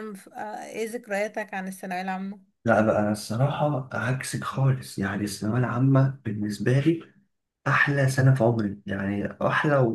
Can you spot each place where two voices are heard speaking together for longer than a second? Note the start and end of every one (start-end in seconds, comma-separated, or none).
none